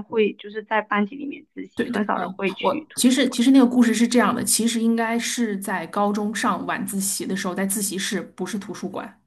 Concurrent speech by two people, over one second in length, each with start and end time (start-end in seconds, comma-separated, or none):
1.8-3.4